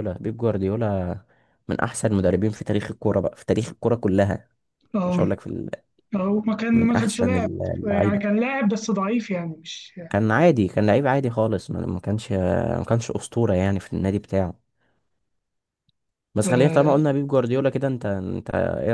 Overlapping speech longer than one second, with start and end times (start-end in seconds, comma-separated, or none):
6.7-8.2